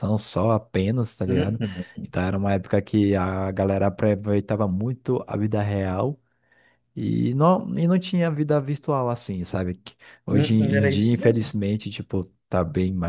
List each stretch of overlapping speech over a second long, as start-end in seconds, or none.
10.3-11.5